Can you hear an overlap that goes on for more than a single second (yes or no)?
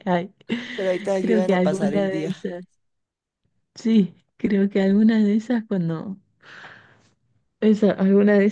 yes